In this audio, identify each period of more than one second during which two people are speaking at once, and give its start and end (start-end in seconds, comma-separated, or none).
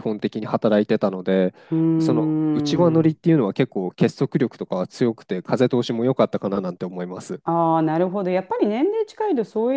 2.0-3.2